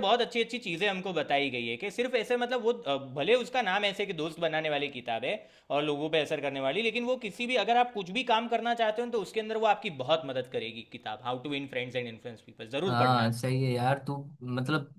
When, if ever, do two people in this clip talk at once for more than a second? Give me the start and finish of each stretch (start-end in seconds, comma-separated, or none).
none